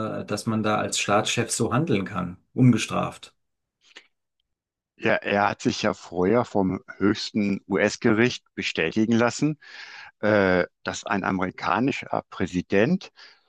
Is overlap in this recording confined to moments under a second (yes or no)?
yes